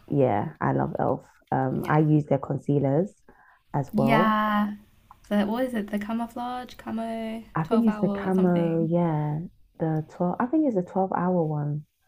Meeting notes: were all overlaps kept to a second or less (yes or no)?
no